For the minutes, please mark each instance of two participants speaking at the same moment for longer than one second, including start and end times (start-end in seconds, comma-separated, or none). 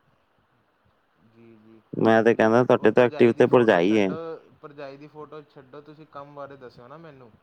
2.1-4.1